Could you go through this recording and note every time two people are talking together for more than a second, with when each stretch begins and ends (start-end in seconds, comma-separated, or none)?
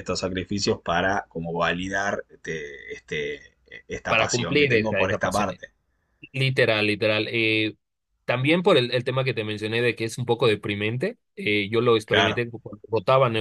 4.1-5.5